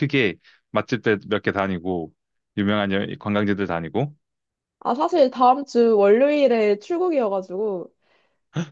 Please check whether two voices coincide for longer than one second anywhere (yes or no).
no